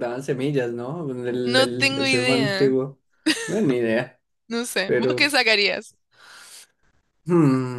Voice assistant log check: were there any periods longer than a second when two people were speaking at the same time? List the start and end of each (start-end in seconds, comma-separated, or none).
1.4-2.7